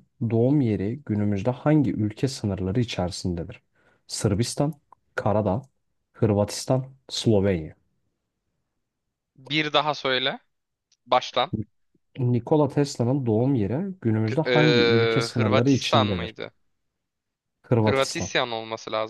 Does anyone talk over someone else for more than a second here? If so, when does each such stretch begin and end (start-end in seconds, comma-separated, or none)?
14.2-16.4